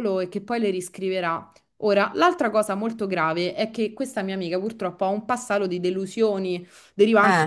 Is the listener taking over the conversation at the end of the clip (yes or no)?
no